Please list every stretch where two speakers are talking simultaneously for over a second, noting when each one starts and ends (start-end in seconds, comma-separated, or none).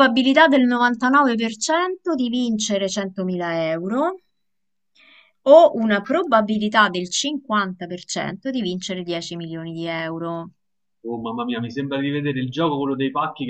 none